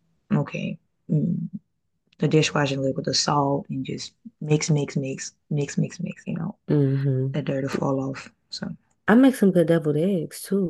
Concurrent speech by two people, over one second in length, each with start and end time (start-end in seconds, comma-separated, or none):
none